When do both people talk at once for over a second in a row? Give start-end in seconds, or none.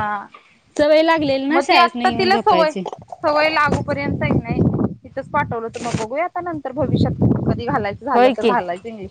1.5-2.7